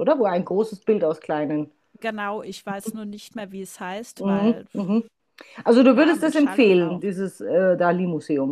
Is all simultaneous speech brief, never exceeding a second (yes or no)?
no